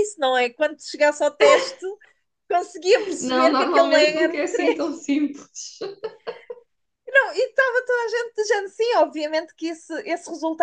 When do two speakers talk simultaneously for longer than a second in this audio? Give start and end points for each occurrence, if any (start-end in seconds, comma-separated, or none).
3.2-5.0